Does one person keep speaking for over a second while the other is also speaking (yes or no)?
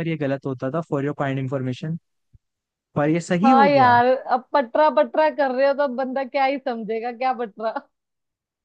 no